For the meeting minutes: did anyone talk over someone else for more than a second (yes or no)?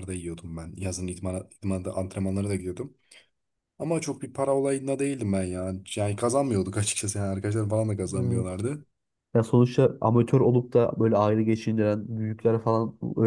no